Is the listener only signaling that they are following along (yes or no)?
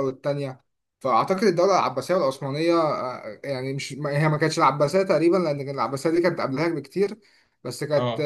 yes